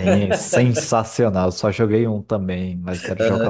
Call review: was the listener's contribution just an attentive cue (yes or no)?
no